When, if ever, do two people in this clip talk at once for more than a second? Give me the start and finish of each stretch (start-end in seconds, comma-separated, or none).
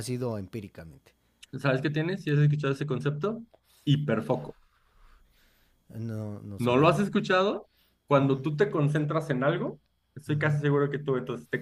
none